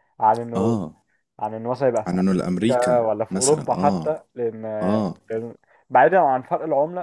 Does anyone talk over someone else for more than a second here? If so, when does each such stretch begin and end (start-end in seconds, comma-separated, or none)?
2.1-4.1